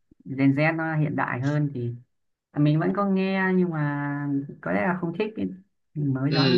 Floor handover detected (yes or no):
yes